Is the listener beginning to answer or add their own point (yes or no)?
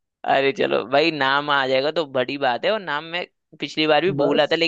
no